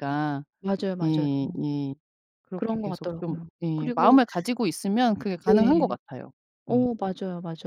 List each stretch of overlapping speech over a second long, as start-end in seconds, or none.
2.5-4.2